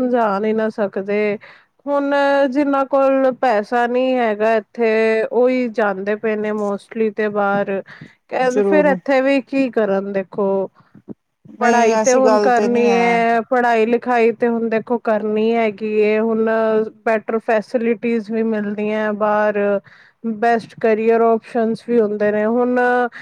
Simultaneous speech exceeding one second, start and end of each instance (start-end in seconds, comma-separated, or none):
11.6-13.2